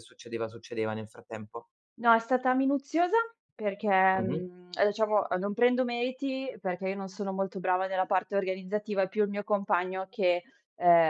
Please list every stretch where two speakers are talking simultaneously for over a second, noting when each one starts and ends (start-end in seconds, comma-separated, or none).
none